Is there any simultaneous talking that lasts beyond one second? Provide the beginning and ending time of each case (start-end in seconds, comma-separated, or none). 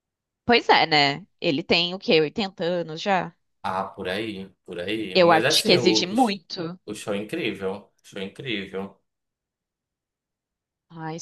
5.1-6.4